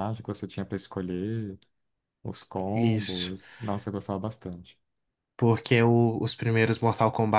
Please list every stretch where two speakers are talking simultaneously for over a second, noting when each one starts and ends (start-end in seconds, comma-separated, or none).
none